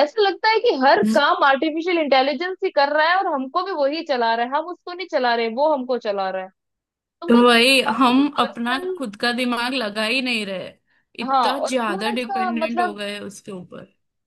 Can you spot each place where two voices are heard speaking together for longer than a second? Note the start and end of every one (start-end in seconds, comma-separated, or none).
7.3-9.0, 11.2-13.0